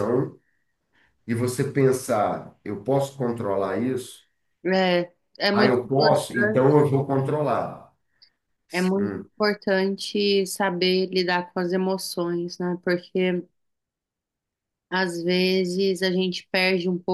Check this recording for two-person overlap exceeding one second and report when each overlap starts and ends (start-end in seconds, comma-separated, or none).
5.5-6.7